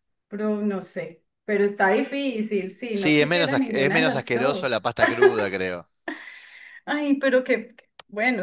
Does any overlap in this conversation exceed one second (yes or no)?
yes